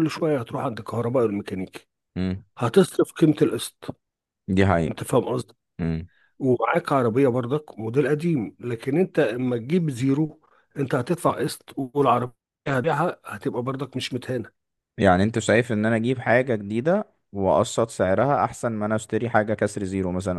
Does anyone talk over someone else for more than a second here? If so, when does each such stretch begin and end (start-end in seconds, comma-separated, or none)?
none